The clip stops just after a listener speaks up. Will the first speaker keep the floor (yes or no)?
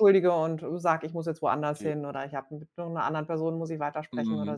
no